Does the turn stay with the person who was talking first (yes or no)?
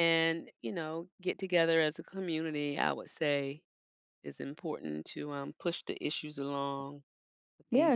no